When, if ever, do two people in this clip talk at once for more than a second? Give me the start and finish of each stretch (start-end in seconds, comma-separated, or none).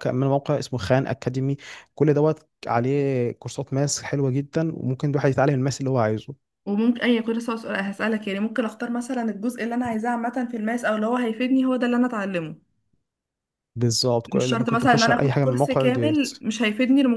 14.3-16.2